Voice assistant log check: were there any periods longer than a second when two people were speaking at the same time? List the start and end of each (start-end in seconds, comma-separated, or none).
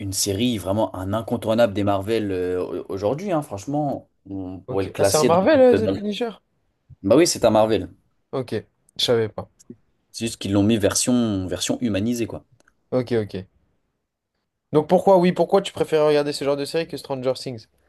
4.7-6.0